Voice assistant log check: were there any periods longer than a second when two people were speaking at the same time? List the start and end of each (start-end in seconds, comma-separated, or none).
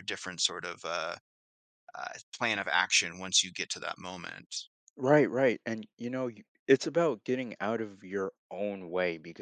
none